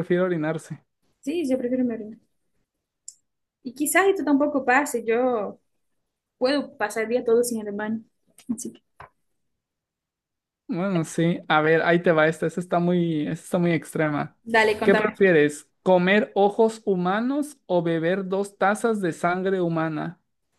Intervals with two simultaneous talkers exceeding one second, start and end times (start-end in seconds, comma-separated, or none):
none